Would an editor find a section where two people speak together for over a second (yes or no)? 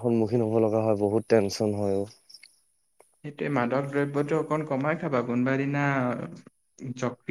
no